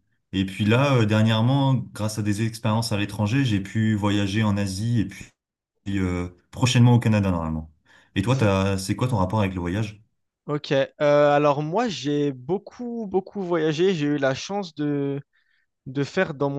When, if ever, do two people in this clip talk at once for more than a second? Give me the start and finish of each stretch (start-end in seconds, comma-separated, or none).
none